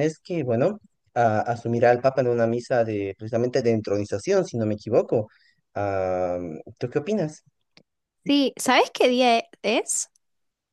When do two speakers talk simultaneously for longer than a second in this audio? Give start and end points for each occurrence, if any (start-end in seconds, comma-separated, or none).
none